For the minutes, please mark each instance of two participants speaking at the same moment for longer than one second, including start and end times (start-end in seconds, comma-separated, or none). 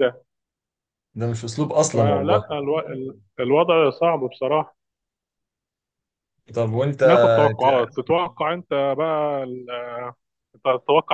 none